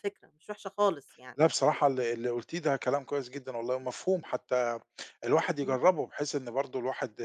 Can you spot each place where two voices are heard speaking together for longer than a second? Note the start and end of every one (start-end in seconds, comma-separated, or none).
none